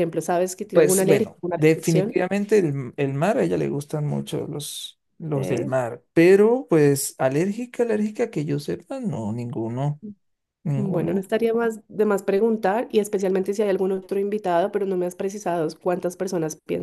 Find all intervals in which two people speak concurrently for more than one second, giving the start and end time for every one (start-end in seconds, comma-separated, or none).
0.7-2.1